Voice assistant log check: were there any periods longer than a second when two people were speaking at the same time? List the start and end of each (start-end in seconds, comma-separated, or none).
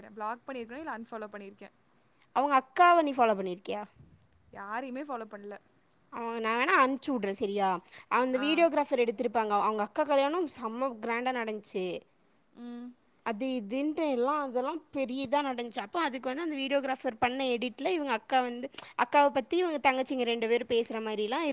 none